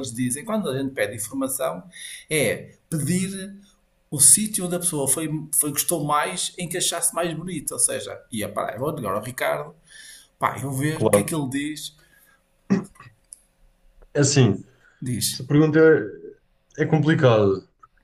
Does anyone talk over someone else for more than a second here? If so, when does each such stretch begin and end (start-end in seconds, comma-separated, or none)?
none